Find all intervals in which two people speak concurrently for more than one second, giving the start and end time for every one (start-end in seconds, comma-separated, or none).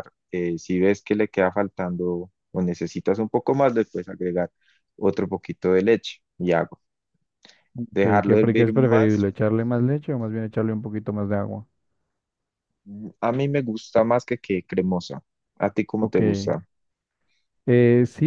7.9-9.3